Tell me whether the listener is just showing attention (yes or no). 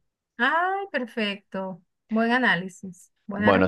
no